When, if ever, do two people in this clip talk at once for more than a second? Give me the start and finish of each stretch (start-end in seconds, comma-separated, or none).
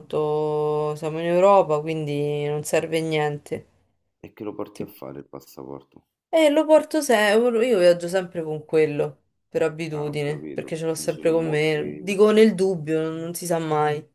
9.9-12.1